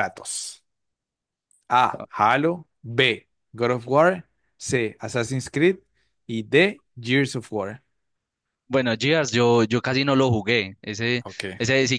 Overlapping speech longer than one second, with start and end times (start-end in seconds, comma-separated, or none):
none